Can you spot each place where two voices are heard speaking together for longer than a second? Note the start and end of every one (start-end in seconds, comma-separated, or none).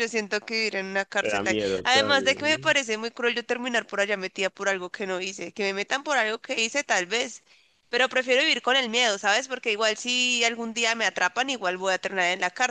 1.2-2.7